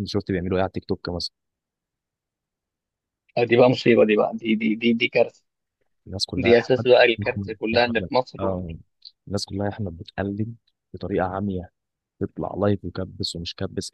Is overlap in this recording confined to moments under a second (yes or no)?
no